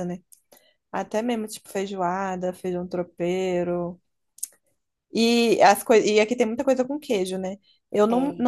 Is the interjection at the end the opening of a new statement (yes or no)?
no